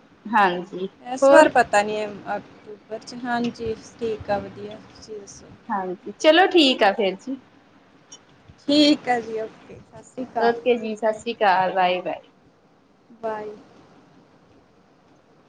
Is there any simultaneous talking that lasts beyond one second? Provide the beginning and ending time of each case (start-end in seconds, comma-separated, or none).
none